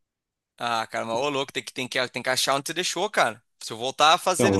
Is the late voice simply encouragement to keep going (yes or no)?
no